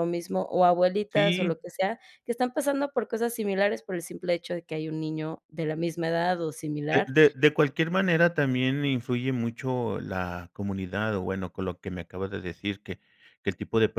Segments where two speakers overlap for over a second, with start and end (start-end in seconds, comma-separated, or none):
none